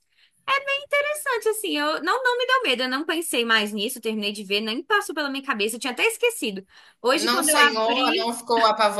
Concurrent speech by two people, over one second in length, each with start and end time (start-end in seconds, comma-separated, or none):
7.1-8.3